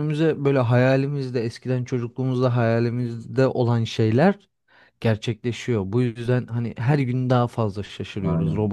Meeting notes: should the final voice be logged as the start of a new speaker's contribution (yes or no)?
no